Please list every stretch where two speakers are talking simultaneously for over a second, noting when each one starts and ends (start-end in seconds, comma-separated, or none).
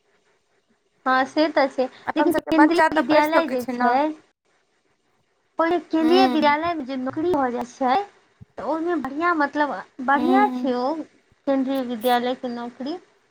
2.1-3.9